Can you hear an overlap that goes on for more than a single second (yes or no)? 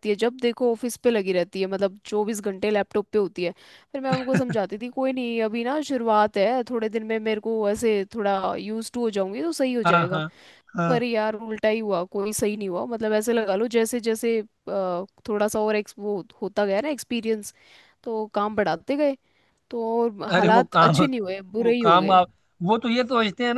no